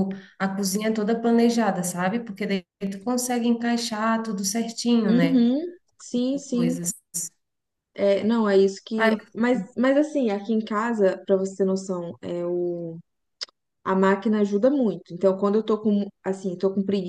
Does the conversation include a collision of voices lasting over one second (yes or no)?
no